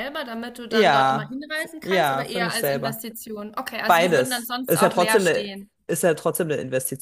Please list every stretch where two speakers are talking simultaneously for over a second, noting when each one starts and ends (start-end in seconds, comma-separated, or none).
0.7-3.0, 3.9-5.5